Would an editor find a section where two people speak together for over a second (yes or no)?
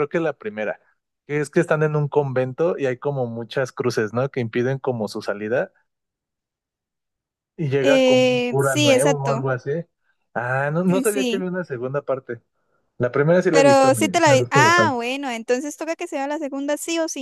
yes